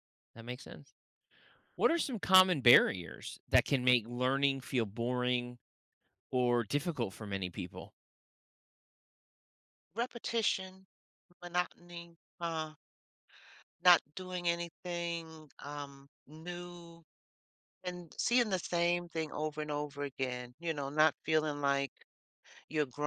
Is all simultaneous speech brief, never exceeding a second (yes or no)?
yes